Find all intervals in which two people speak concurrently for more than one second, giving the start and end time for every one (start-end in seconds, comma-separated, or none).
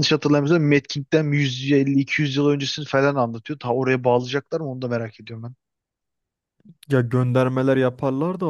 none